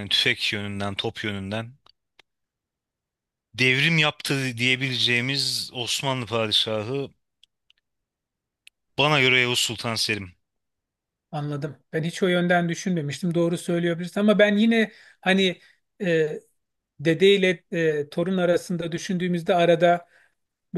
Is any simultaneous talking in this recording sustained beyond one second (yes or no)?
no